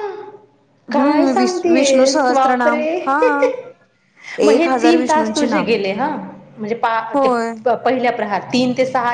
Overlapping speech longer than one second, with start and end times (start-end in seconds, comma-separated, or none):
1.0-3.1, 4.5-5.8